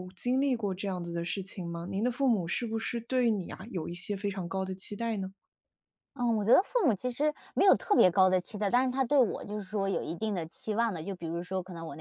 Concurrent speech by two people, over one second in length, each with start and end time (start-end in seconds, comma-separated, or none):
none